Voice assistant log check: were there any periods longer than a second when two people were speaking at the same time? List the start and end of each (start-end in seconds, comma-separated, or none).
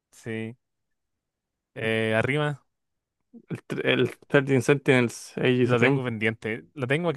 none